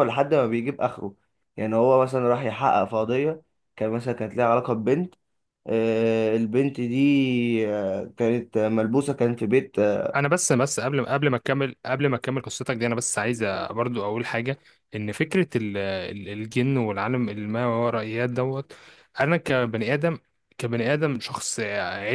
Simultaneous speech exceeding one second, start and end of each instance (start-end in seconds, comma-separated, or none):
none